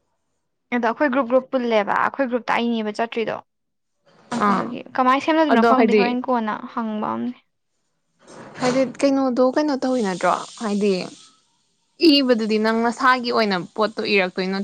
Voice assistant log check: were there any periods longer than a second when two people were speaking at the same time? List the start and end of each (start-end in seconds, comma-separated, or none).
none